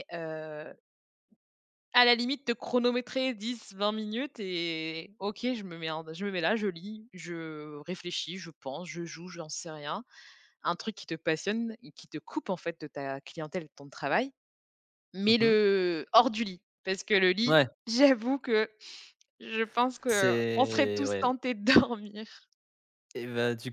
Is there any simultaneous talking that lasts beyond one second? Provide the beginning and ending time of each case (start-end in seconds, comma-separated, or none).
20.1-21.3